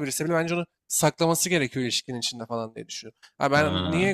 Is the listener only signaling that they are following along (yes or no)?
yes